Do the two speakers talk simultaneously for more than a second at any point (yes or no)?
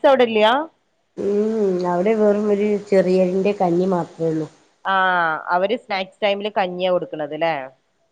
no